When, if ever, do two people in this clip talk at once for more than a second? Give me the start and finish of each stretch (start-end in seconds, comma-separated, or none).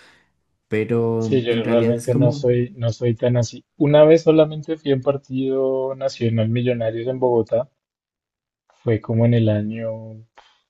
1.2-2.5